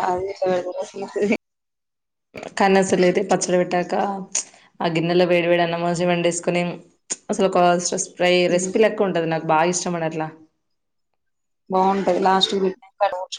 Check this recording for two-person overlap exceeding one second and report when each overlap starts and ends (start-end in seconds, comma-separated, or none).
none